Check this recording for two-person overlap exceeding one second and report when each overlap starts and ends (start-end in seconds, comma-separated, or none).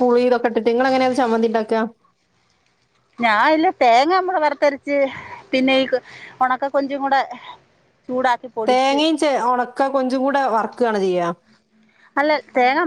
none